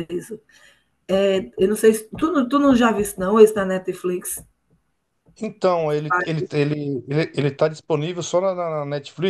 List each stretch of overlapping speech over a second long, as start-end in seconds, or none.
none